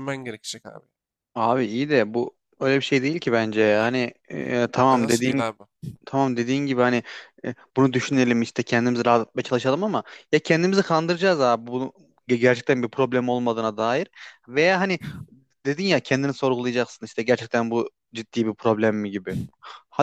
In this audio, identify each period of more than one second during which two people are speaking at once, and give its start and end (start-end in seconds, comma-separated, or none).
none